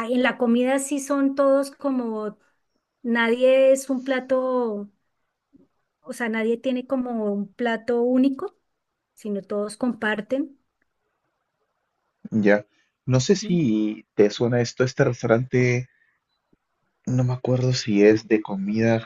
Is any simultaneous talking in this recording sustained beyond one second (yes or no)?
no